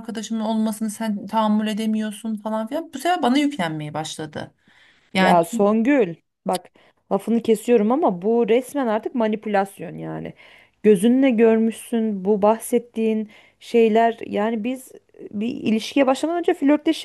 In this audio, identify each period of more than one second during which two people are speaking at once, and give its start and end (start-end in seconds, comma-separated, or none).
none